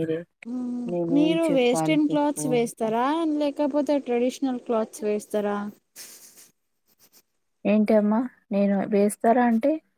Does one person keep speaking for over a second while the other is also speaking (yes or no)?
yes